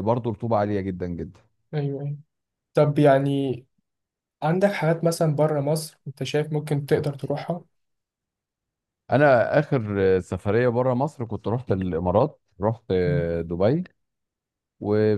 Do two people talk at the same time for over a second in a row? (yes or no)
no